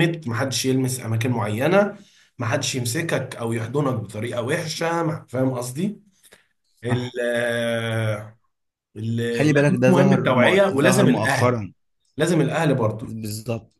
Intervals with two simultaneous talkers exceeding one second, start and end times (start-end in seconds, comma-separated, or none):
9.5-11.6